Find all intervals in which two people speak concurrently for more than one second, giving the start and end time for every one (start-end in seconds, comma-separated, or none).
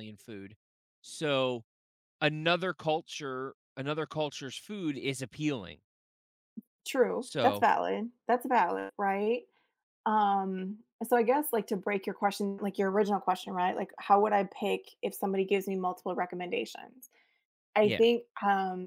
none